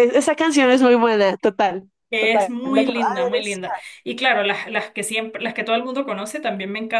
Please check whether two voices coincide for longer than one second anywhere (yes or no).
yes